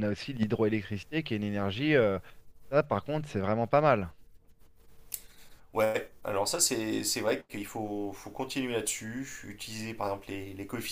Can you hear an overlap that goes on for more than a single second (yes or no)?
no